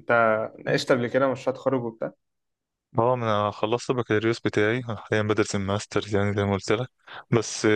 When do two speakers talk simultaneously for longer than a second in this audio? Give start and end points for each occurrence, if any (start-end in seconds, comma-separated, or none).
none